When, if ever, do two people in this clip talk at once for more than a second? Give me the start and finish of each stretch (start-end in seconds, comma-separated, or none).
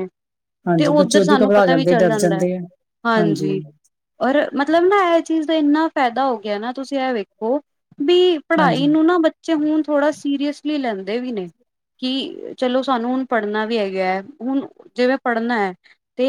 0.8-2.4